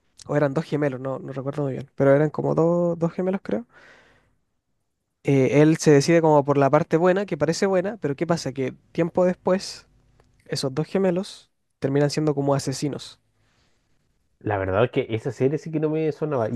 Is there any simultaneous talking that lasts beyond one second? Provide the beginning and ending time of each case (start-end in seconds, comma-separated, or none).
none